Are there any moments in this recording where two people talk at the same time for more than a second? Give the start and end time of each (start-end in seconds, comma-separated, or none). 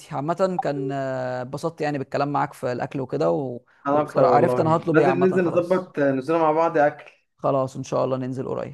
3.9-5.9